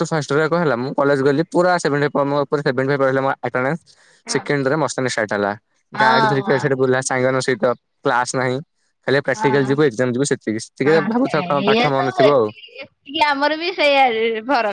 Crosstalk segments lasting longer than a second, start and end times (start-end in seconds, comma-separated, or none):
10.7-12.5